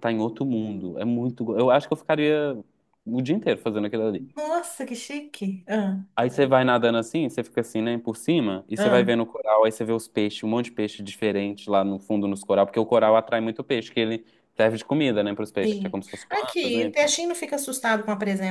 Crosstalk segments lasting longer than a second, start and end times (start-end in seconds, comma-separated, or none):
15.6-17.1